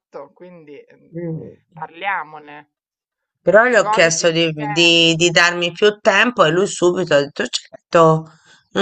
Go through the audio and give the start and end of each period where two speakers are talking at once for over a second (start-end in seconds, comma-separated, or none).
3.7-5.0